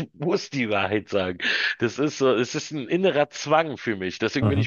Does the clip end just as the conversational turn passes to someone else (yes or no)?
no